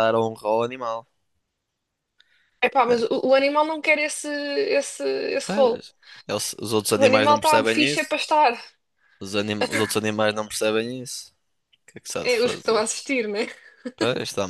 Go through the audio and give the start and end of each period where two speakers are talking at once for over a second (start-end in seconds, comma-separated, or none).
7.0-8.2